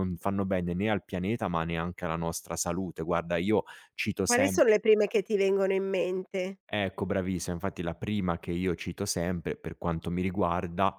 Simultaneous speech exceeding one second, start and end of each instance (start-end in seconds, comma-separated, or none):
none